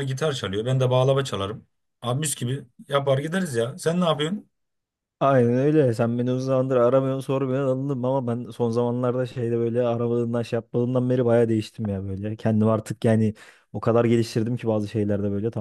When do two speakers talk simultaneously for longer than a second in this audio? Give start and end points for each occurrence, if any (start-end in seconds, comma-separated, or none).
none